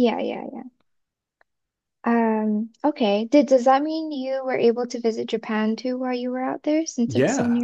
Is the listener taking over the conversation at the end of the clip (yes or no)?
yes